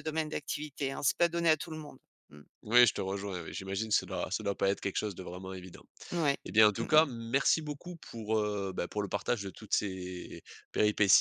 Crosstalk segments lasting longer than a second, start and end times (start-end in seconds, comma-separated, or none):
none